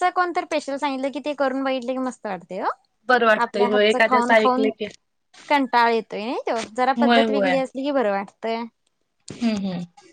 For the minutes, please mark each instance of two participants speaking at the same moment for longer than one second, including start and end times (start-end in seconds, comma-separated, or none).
3.1-4.7